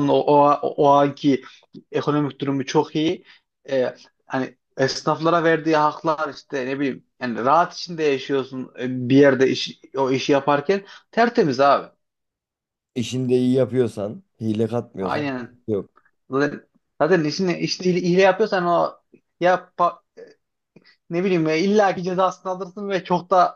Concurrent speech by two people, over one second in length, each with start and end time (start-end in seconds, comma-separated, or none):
none